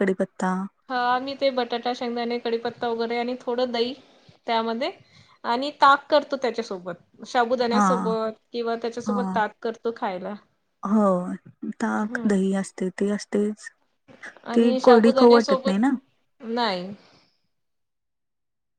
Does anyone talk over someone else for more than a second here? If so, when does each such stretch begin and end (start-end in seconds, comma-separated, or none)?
14.5-15.8